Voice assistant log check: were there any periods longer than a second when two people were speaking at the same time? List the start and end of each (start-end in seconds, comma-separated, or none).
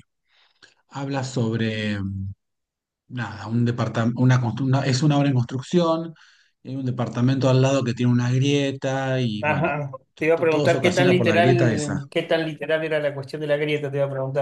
10.3-12.0